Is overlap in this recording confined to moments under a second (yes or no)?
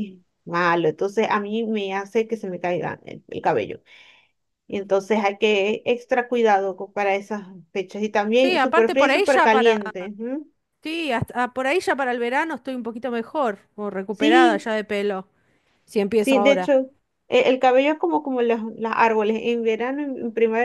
no